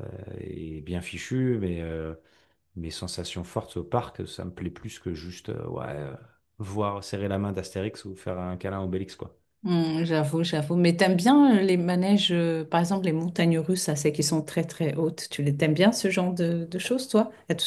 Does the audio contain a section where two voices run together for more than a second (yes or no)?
no